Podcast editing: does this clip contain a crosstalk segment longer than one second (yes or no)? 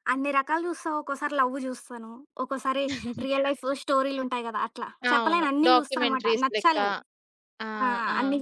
yes